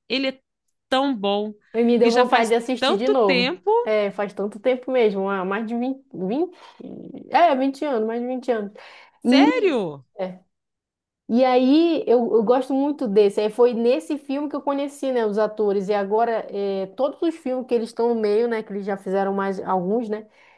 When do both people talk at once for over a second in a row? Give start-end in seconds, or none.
2.0-3.7